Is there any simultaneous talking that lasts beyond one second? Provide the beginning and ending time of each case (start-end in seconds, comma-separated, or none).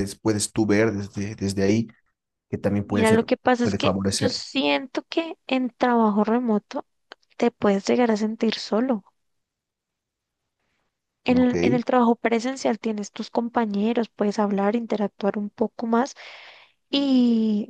2.8-4.4